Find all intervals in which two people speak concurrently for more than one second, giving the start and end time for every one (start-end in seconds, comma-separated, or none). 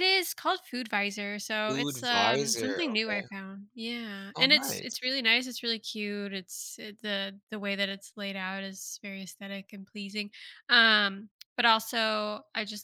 1.6-3.3